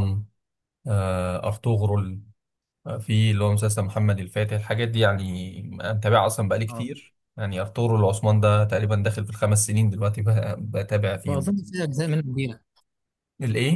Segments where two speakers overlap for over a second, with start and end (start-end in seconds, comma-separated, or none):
none